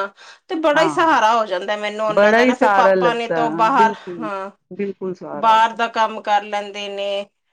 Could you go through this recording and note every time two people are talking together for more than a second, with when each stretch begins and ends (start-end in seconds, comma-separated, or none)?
2.1-4.3